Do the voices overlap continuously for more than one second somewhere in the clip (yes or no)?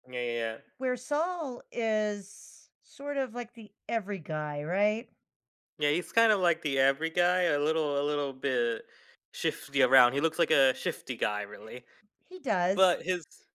no